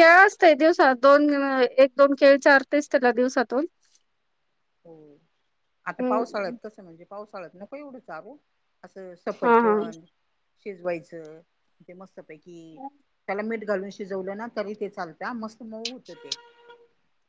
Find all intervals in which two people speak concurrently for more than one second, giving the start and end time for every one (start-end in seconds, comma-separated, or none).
none